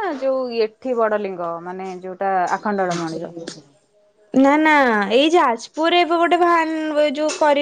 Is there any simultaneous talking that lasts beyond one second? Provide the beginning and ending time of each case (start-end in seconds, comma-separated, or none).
none